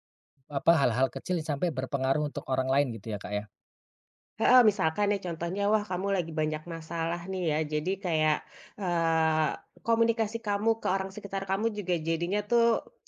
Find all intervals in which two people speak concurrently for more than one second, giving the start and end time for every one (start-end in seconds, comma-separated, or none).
none